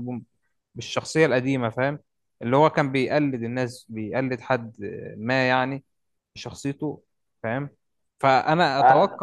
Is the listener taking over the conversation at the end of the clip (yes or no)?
no